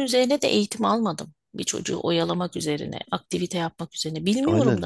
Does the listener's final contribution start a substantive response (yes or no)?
yes